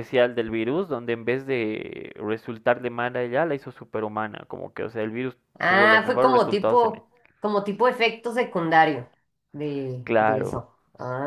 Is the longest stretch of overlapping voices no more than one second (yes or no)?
no